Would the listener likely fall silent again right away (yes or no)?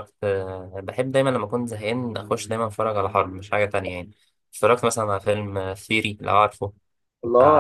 no